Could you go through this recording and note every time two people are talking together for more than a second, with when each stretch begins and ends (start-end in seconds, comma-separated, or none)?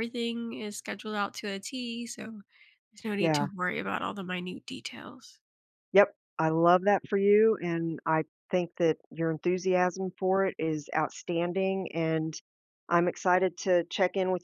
none